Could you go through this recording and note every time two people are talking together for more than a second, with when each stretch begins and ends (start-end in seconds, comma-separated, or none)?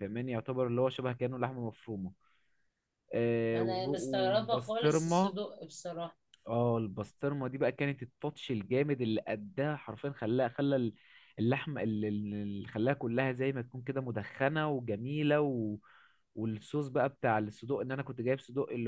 3.5-5.4